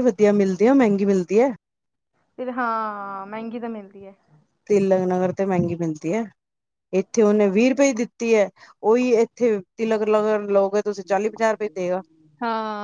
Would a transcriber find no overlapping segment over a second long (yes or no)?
yes